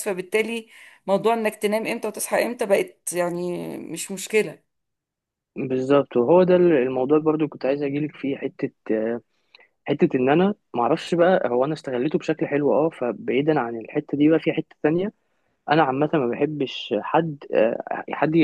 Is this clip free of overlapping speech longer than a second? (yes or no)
yes